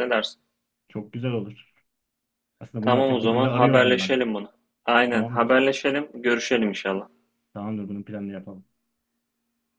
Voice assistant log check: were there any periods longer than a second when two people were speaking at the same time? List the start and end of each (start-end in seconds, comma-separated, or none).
2.8-4.2